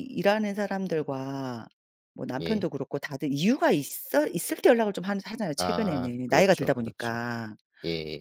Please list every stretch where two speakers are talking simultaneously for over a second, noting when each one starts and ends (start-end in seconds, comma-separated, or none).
5.6-7.2